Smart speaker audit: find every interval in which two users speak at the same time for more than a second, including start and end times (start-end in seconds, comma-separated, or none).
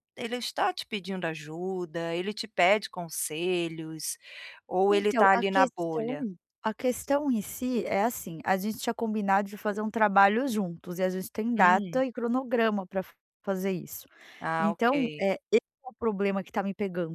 4.9-6.2